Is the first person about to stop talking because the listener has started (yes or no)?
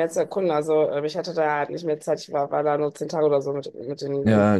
yes